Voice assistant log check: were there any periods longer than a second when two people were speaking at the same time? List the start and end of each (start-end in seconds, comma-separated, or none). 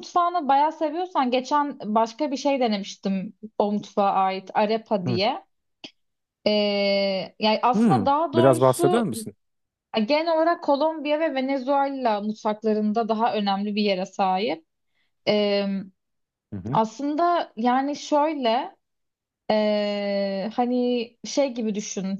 7.7-9.1